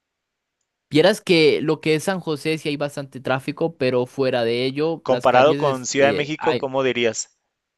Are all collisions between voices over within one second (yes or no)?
no